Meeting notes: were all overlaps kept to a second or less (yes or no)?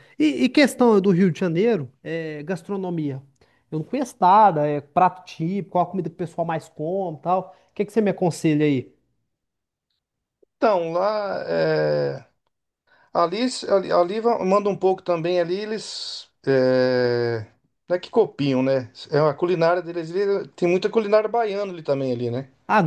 yes